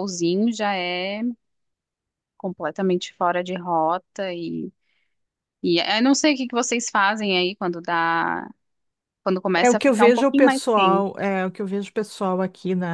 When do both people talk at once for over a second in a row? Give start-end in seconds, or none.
9.6-11.1